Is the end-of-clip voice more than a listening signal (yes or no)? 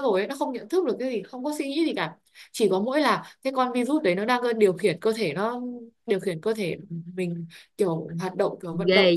yes